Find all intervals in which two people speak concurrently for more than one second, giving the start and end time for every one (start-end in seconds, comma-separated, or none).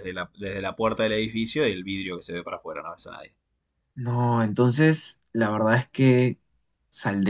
none